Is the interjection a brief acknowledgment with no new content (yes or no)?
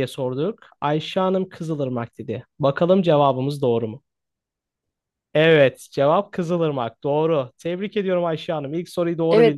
no